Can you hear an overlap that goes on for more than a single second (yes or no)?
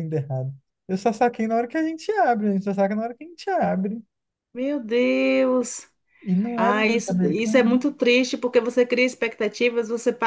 yes